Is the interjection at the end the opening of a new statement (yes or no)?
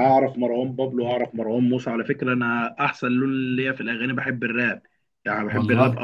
no